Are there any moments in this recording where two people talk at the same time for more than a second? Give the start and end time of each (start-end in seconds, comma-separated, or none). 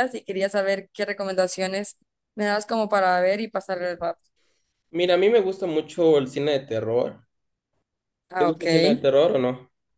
none